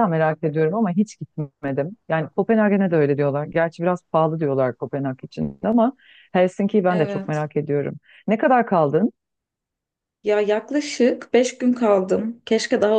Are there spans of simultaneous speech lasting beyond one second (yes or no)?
no